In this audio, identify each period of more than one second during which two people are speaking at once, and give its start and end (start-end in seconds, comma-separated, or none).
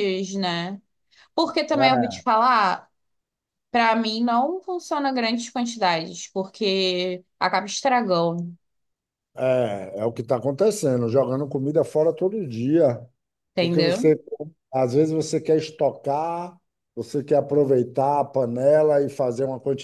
none